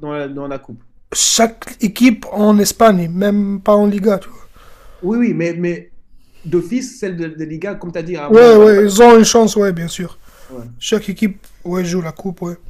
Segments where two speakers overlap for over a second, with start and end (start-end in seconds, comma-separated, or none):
none